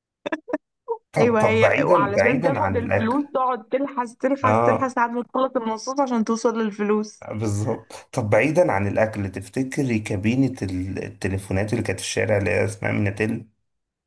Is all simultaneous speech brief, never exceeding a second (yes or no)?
no